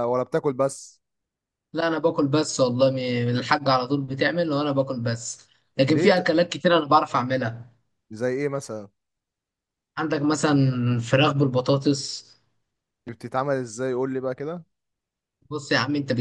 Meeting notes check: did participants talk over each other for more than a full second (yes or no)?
no